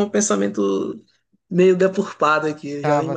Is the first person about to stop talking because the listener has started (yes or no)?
yes